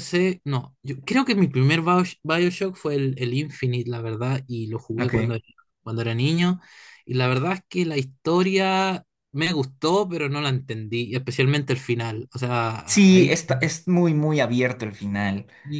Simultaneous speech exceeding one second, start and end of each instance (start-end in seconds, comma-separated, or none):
none